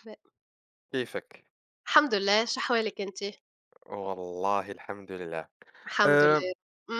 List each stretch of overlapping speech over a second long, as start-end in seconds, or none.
none